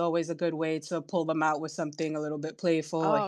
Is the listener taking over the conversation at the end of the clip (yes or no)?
no